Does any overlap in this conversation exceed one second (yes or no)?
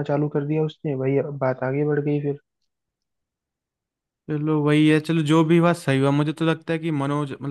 no